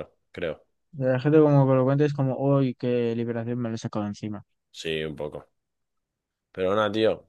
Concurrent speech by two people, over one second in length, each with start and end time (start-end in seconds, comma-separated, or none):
none